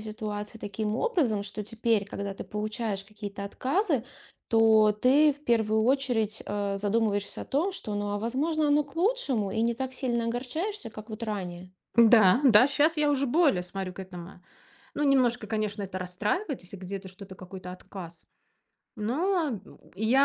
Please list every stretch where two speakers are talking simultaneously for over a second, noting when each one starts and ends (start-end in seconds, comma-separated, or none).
none